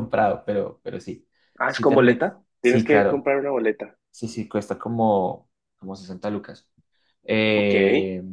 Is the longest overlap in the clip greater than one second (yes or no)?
yes